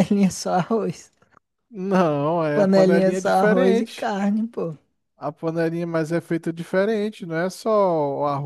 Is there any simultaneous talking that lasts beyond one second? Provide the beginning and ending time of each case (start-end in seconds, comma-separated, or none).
2.5-4.1